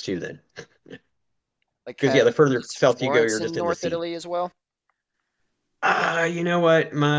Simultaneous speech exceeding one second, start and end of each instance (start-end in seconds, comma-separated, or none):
2.0-4.0